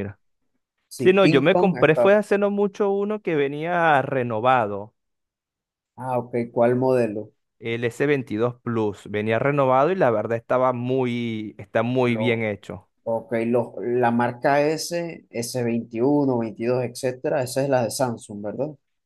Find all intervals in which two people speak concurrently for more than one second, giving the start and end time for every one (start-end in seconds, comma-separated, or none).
1.0-2.2